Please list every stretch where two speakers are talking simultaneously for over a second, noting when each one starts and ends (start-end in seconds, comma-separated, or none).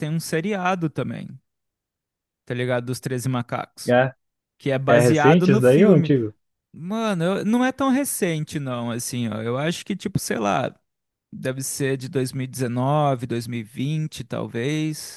4.9-6.1